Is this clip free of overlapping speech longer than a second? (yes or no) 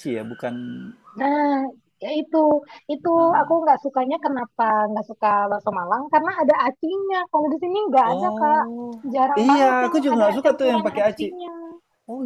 no